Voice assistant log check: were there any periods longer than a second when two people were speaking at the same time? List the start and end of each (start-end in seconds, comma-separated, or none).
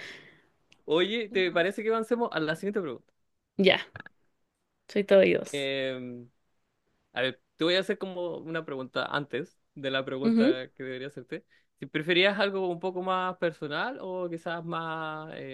none